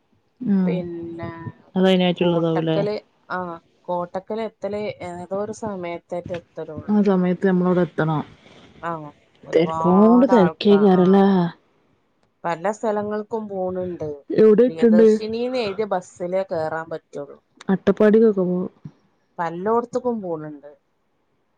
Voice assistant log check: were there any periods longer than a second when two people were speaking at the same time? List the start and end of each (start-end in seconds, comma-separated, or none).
9.6-11.2